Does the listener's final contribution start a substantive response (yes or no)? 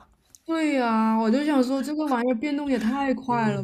no